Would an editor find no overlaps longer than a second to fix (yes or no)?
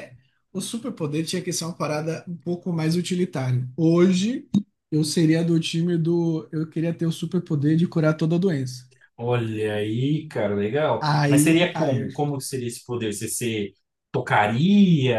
no